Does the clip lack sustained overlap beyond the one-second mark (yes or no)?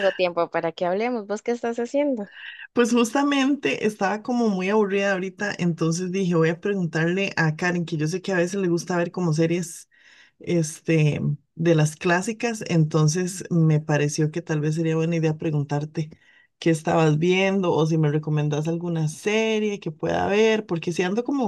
yes